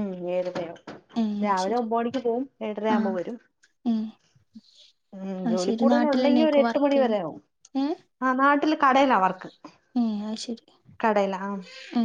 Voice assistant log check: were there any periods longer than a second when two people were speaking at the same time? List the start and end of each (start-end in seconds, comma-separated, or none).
5.5-7.2